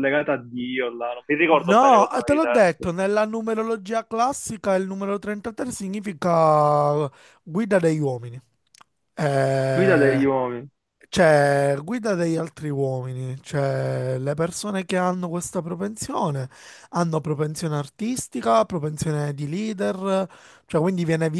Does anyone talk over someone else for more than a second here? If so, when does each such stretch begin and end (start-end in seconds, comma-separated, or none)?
1.5-2.9